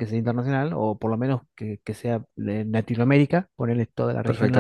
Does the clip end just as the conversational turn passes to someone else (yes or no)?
yes